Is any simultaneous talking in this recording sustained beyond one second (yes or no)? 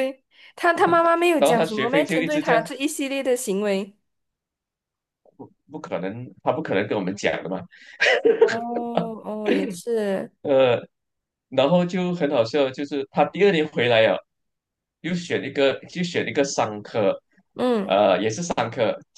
yes